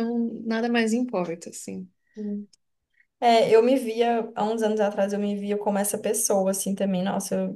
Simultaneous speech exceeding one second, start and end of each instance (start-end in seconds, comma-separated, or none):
none